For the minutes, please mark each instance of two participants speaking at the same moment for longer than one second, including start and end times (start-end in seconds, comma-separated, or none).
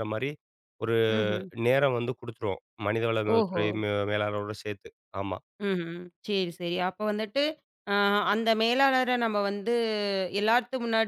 none